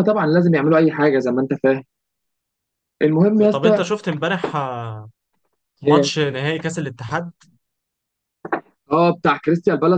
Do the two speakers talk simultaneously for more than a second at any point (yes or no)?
no